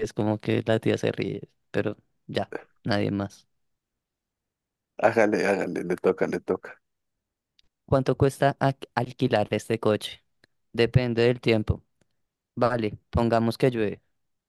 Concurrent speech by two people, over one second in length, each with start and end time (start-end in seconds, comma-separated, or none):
none